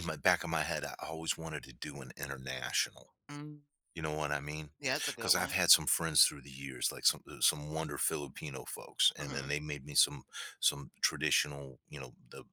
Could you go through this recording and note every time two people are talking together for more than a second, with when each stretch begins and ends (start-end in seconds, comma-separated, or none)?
none